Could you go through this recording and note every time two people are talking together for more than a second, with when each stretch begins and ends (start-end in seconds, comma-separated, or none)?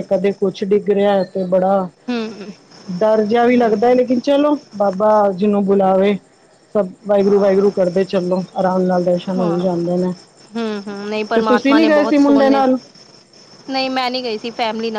11.3-12.6